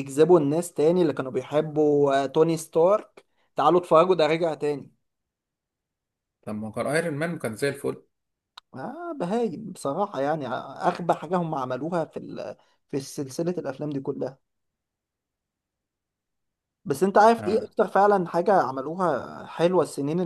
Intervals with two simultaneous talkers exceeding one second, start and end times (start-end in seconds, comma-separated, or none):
none